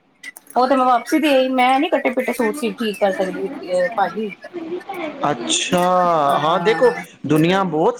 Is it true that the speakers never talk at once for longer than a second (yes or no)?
yes